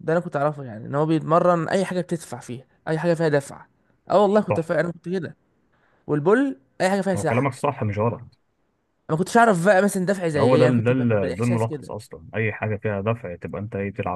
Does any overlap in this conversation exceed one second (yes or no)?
yes